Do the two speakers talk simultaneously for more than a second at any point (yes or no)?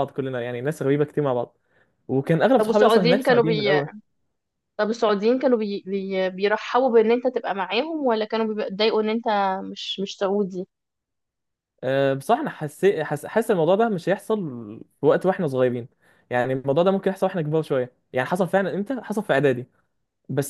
yes